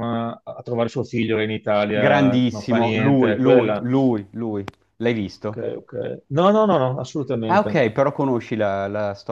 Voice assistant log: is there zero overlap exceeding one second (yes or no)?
no